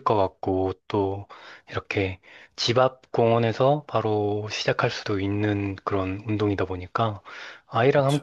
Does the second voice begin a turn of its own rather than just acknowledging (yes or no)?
no